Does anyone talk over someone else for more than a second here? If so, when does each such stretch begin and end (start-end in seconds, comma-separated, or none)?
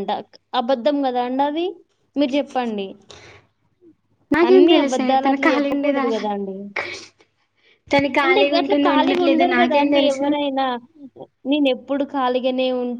4.5-6.0, 8.2-10.3